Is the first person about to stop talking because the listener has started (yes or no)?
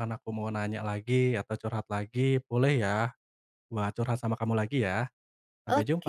yes